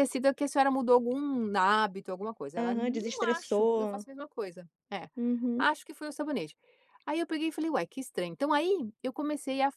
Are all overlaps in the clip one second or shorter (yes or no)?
no